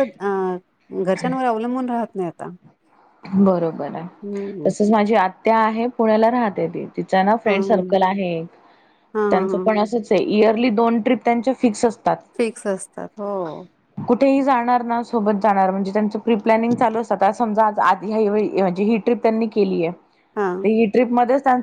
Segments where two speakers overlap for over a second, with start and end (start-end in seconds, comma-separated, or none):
none